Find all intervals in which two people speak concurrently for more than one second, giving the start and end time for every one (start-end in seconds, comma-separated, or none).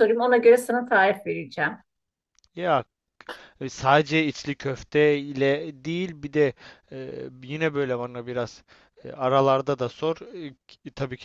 none